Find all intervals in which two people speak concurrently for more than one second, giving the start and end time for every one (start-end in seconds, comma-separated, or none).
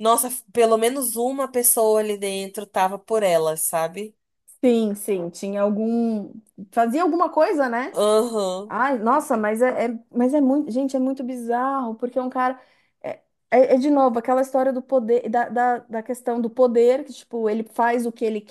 none